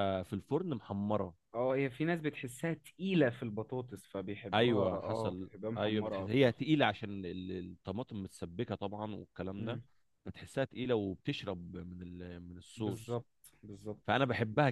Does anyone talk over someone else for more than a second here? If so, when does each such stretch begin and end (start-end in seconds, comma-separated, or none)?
4.5-6.5